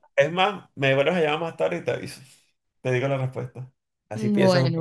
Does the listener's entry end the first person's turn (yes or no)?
yes